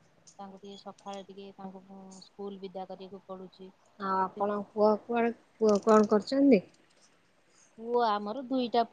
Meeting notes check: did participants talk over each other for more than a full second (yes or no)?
no